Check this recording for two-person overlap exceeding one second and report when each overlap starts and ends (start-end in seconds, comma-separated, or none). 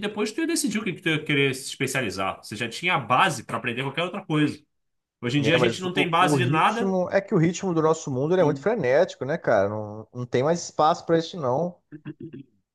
5.4-6.9